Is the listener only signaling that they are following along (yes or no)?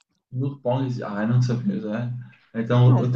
yes